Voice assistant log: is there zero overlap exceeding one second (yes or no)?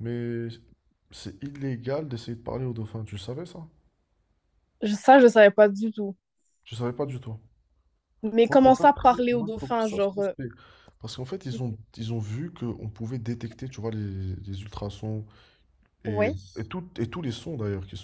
no